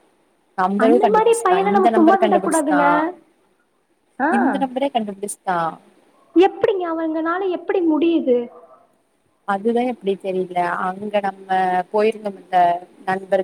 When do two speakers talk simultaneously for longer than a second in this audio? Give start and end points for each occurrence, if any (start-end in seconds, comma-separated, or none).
0.8-2.8